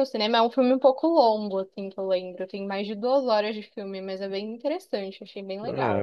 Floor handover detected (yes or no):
yes